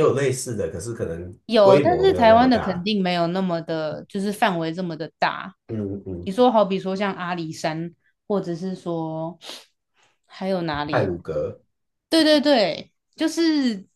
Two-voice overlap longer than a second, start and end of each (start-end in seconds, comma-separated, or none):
1.5-2.9